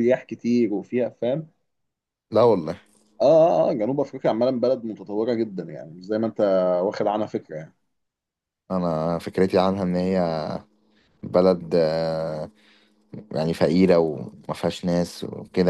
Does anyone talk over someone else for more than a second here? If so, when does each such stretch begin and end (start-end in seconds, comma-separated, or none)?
none